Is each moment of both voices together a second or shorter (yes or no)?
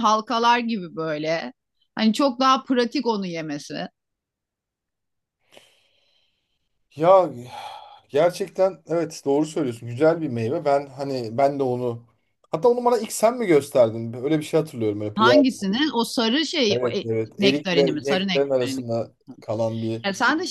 no